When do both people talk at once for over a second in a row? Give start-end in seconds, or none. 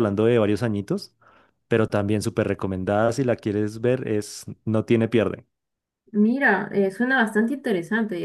none